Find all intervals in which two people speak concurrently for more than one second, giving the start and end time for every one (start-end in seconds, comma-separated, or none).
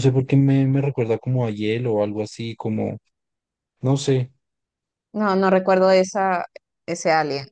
none